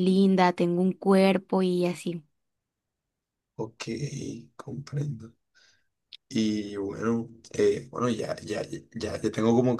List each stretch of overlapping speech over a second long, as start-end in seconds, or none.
none